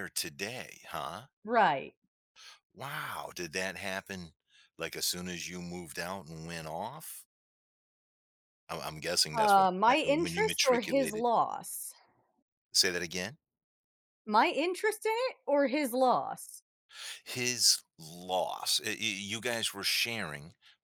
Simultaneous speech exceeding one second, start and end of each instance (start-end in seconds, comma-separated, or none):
9.3-11.2